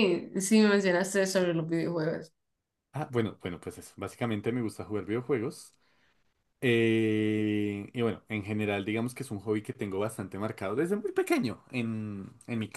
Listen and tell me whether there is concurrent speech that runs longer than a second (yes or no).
no